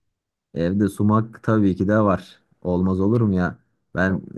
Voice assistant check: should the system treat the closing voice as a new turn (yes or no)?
no